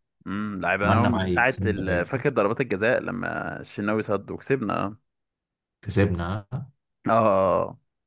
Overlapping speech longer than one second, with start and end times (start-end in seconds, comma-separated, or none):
0.8-2.2